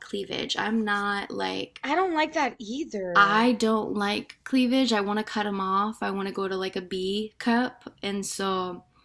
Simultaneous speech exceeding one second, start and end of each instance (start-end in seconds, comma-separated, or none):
none